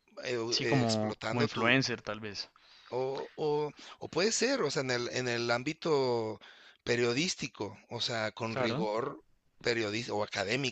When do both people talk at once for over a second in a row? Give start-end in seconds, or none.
0.5-1.7